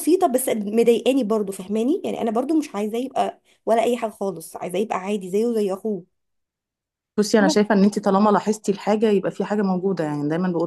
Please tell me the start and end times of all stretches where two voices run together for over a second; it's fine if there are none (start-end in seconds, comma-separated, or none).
none